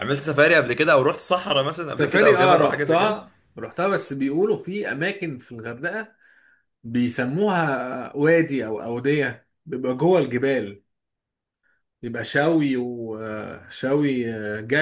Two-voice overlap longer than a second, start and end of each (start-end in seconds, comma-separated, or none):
2.0-3.2